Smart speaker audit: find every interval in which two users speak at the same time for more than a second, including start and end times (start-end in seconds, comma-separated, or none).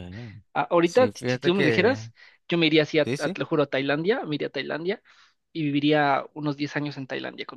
0.8-2.1